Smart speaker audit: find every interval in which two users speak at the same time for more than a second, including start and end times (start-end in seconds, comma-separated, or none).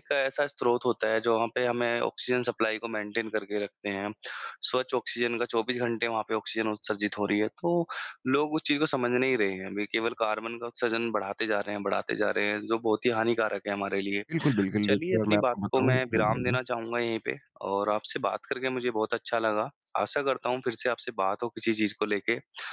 14.8-16.6